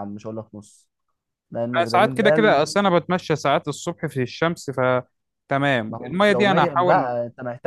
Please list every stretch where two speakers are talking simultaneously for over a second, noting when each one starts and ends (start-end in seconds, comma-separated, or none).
5.9-7.1